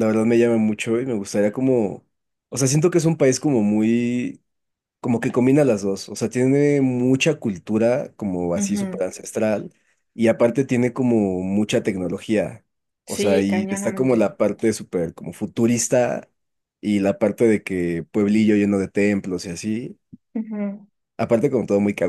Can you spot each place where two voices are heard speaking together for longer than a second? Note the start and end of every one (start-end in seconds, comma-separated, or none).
13.1-14.3